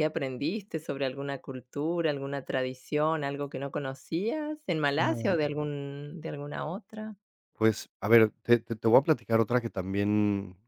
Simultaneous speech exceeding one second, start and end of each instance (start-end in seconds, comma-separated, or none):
none